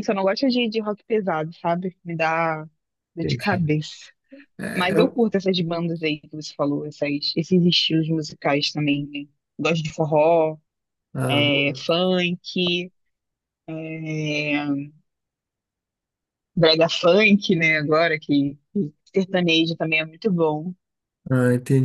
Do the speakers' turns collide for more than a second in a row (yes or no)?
no